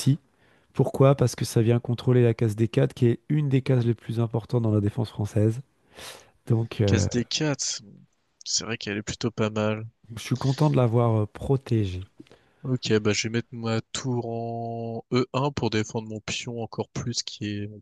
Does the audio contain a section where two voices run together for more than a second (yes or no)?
no